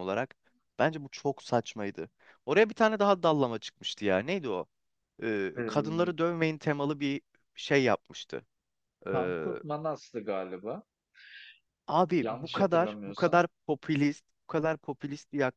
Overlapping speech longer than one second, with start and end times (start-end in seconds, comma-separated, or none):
12.2-13.4